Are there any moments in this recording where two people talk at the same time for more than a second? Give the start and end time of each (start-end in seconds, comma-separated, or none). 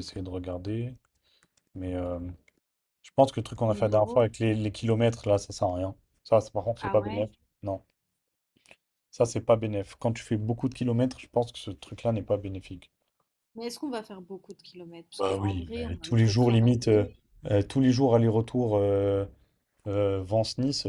15.2-17.1